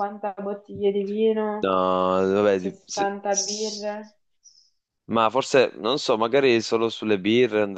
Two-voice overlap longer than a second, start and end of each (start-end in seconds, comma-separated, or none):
2.5-4.0